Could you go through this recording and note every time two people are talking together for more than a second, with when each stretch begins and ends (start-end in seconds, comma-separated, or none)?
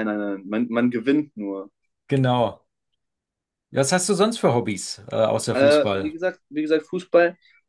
none